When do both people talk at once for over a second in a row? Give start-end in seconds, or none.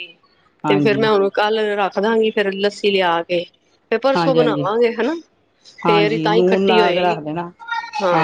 5.8-7.2